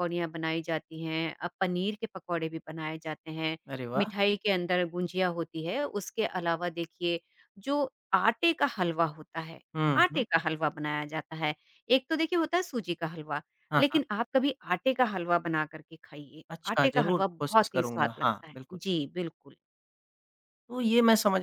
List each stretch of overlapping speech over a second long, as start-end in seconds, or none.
16.5-18.8